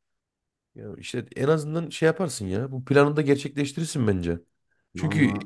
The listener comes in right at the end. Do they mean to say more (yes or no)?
no